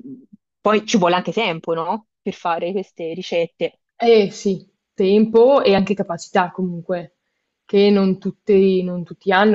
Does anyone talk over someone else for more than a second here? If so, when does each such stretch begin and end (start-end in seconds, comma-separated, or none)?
none